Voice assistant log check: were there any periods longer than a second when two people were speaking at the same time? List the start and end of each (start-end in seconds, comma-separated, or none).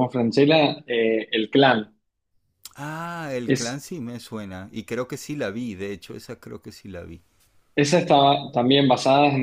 none